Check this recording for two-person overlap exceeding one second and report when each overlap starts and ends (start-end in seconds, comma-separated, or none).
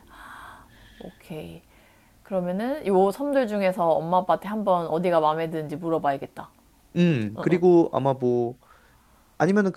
none